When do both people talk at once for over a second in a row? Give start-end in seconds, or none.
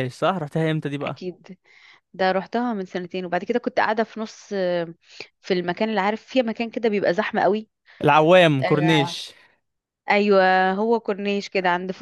none